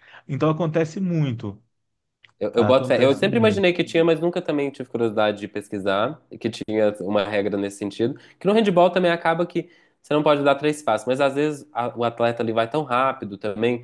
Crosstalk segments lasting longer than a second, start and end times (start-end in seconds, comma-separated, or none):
2.5-3.7